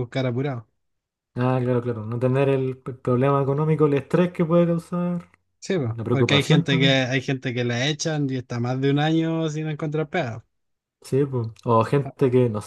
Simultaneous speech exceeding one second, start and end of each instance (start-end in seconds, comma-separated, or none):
5.7-7.1